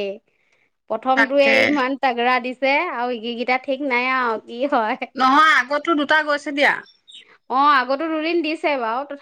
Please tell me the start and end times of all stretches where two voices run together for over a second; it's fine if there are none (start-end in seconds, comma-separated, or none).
none